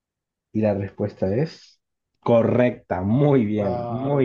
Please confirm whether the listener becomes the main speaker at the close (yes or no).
yes